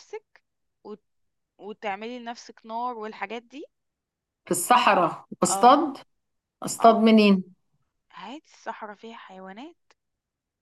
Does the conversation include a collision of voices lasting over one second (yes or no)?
no